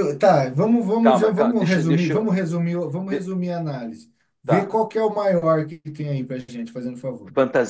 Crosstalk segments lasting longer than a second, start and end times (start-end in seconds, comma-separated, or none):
1.0-2.3